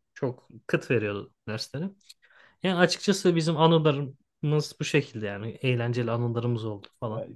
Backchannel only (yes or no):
no